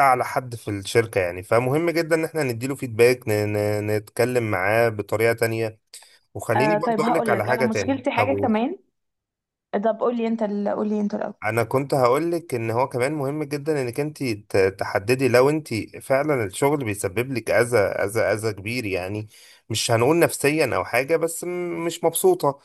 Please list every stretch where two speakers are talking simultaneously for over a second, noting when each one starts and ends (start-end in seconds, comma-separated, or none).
6.5-8.3